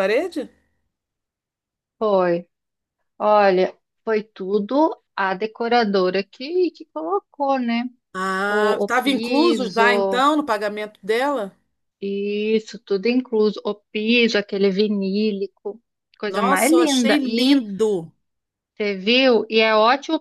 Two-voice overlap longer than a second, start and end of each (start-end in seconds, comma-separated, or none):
8.5-10.3, 16.3-17.6